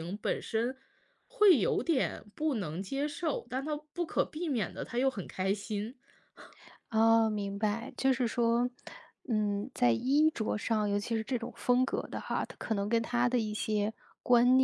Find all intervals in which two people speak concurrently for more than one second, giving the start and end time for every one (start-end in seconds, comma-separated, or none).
none